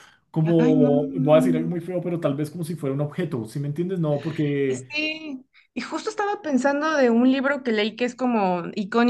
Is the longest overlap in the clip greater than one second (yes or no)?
yes